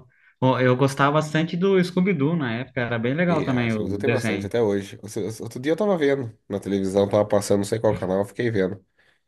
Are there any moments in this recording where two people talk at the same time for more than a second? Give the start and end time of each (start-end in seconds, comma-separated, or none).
3.3-4.5